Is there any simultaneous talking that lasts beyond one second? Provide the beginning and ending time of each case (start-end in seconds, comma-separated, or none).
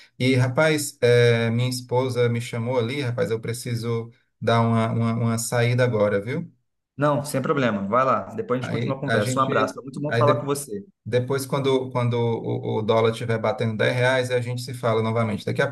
8.6-10.5